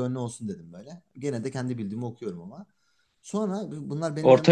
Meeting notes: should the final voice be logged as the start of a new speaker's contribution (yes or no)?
no